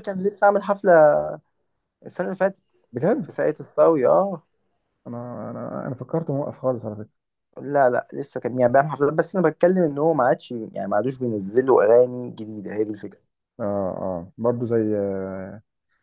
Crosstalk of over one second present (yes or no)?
no